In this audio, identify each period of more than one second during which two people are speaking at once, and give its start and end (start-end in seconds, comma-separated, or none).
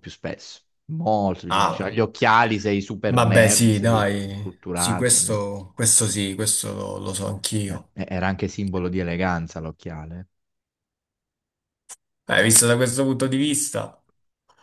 3.1-5.5